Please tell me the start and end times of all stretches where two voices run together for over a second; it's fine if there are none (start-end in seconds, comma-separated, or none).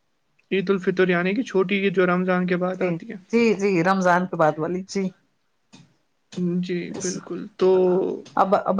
none